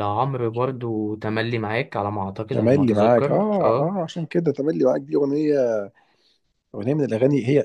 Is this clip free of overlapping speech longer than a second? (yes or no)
no